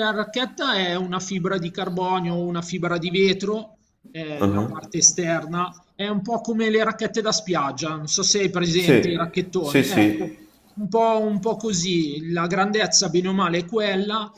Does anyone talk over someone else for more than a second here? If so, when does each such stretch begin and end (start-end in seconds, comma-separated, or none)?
8.8-10.3